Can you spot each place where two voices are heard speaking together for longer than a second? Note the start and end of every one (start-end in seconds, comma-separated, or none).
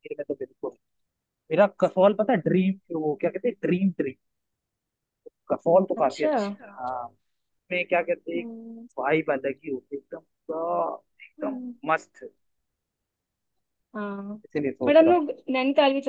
none